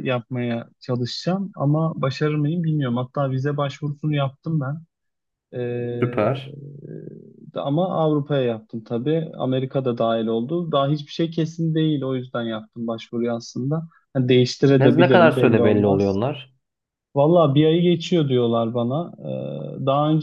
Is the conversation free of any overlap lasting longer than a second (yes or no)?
no